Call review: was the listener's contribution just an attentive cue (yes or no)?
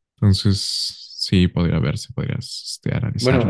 no